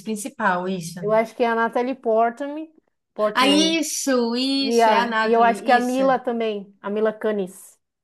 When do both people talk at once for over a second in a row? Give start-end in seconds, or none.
4.6-6.0